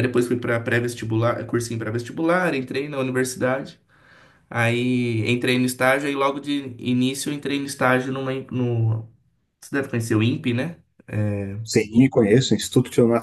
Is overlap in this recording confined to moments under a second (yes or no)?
yes